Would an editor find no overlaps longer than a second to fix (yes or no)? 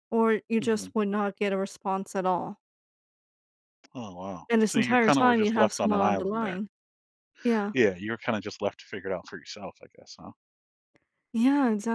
no